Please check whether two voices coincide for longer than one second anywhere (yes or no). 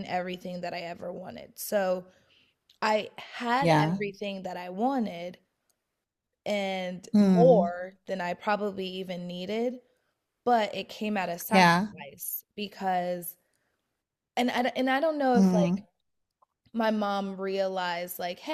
no